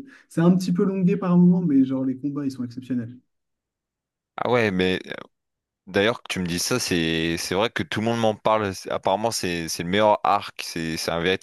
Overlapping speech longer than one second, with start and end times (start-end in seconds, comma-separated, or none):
none